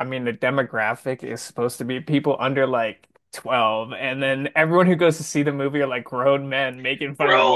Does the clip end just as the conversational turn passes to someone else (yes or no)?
yes